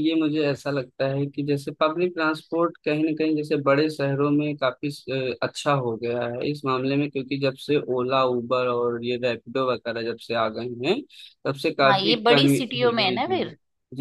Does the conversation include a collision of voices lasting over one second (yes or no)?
yes